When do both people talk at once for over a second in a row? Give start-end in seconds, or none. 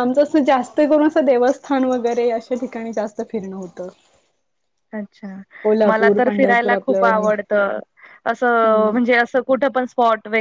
5.8-7.3